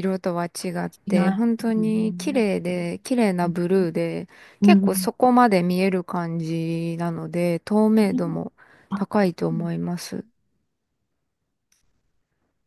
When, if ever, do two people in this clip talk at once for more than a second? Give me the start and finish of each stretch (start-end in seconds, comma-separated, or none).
1.1-2.5